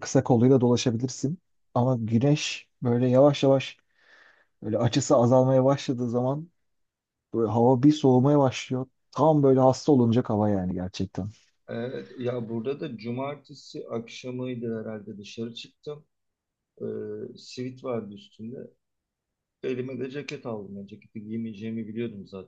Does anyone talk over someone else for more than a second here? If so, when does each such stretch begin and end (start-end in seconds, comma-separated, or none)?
none